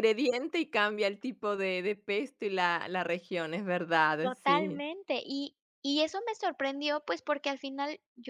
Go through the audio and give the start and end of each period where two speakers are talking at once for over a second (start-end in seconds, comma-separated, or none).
none